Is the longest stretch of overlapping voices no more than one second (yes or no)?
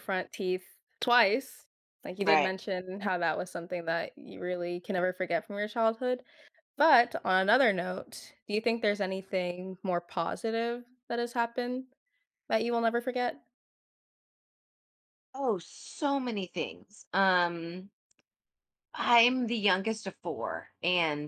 yes